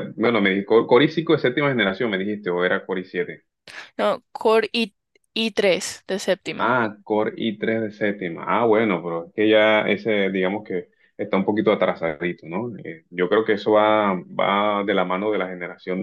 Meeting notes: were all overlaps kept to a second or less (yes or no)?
yes